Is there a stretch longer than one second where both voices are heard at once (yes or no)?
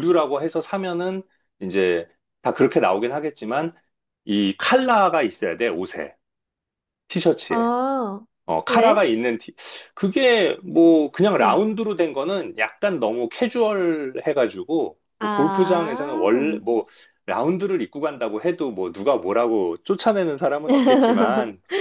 yes